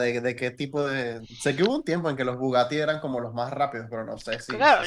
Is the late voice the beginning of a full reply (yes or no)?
yes